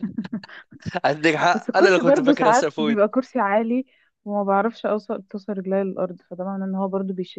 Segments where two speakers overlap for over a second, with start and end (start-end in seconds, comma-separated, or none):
1.5-3.0